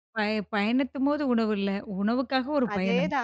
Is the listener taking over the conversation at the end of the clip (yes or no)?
yes